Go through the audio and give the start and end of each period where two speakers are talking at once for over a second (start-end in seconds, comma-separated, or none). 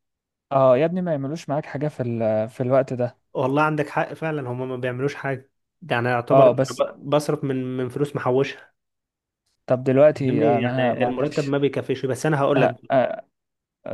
10.1-11.6